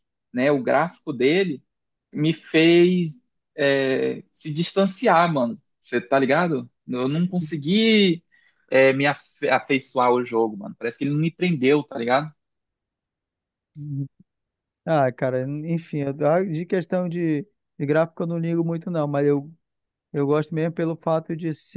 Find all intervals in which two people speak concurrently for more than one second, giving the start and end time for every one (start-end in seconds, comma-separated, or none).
none